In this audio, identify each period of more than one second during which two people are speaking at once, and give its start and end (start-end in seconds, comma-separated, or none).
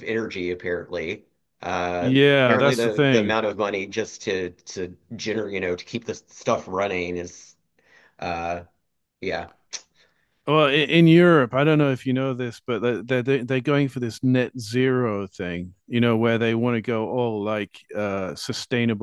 2.0-3.4